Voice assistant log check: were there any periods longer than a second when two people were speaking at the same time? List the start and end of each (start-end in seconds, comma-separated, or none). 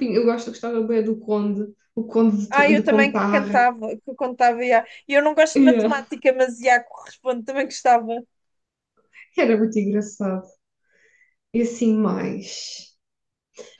2.5-3.7